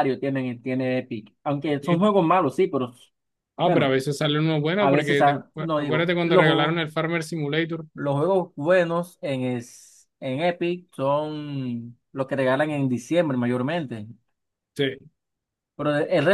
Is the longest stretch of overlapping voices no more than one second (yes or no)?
no